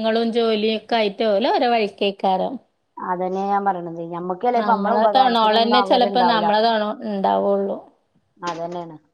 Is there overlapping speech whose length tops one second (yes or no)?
yes